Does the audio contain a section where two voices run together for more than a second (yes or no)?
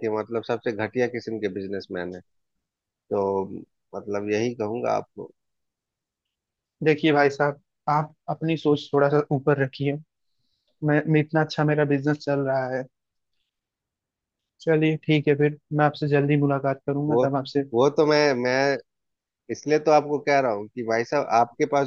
no